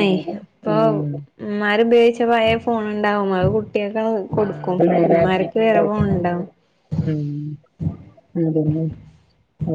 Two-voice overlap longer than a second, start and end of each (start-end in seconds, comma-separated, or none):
4.4-6.3